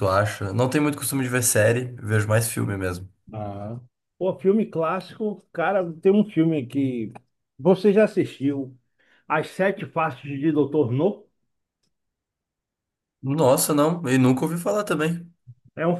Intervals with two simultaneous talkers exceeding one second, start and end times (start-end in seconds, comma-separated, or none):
none